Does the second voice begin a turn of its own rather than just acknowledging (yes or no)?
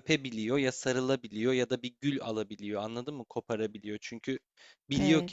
no